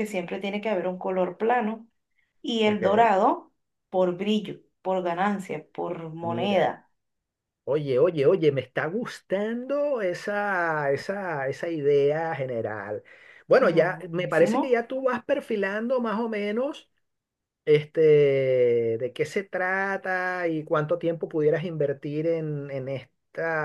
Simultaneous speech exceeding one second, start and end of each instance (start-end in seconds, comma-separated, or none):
13.6-14.8